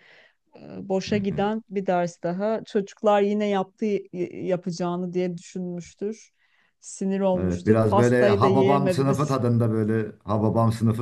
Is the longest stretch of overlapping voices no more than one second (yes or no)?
no